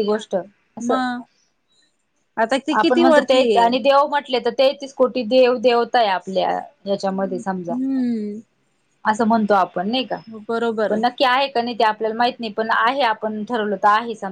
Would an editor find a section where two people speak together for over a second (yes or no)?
no